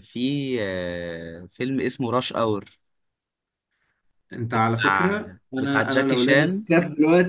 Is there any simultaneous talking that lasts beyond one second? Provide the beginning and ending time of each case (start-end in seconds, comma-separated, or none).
4.6-6.7